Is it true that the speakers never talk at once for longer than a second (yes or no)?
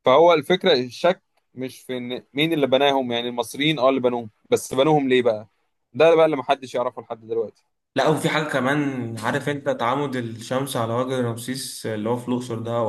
yes